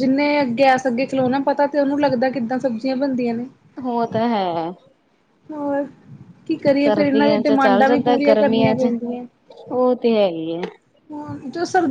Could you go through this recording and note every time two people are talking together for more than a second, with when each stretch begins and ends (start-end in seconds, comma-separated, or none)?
6.8-8.9